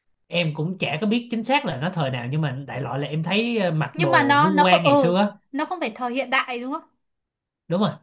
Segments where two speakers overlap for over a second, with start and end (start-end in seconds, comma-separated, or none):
3.9-5.1